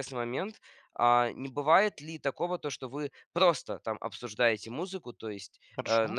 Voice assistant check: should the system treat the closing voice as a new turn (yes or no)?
no